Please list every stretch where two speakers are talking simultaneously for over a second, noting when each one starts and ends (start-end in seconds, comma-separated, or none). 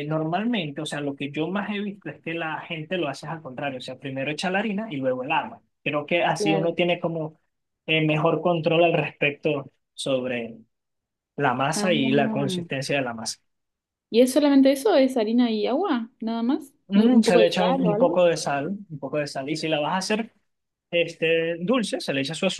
16.9-18.2